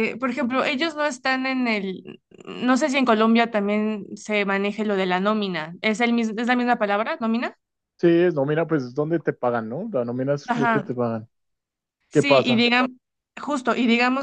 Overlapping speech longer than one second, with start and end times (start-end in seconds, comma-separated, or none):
none